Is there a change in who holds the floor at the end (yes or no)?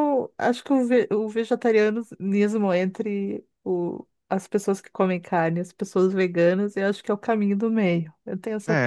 yes